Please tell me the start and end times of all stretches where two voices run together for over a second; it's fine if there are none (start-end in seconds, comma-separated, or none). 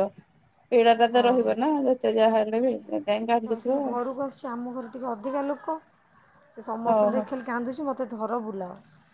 none